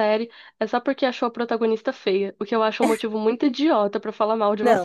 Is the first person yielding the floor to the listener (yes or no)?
yes